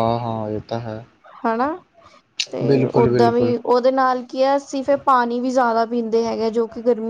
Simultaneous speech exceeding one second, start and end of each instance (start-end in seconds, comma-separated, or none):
none